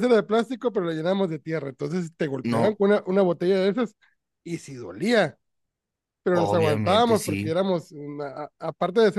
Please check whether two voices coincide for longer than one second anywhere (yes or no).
yes